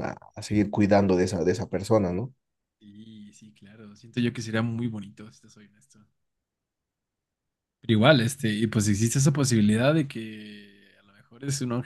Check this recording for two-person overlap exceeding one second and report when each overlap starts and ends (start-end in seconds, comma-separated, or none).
none